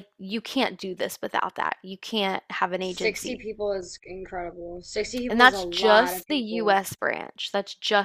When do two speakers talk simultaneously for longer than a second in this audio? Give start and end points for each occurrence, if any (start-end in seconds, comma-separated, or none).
5.3-6.8